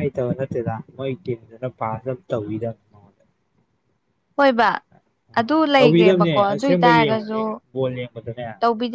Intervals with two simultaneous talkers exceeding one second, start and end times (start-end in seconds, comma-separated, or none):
5.8-7.4